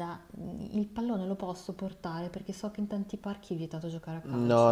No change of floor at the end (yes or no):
no